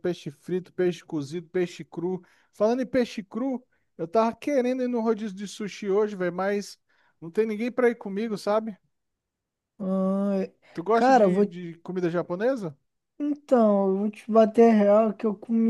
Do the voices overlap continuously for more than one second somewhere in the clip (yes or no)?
no